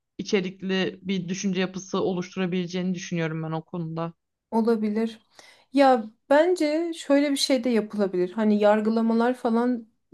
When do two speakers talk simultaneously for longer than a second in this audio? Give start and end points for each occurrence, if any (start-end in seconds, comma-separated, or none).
none